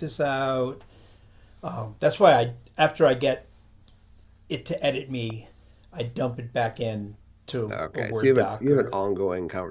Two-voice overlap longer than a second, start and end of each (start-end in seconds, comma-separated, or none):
7.7-9.0